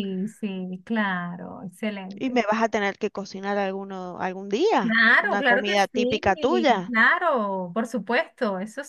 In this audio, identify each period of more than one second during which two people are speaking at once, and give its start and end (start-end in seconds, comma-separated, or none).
4.8-6.9